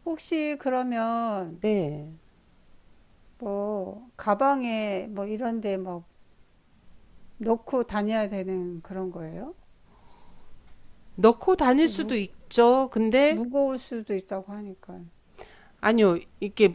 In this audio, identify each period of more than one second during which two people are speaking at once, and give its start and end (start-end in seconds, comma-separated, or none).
none